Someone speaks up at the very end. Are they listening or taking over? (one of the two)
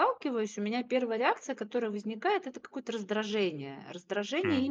listening